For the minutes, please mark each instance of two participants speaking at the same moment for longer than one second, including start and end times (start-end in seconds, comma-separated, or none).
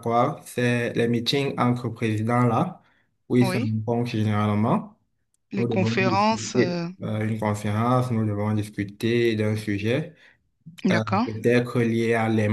5.6-6.9